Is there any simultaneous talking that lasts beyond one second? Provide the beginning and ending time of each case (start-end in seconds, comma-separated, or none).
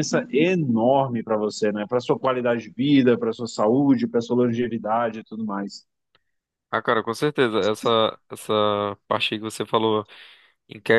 none